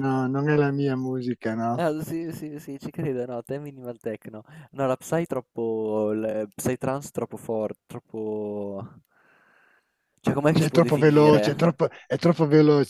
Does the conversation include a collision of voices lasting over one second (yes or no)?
yes